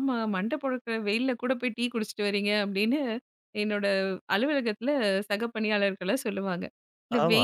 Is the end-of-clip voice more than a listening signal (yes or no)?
no